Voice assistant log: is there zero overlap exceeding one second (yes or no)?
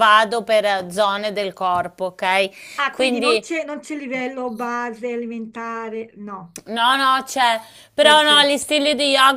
yes